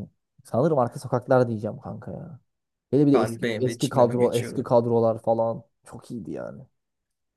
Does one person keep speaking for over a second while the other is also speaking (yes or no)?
yes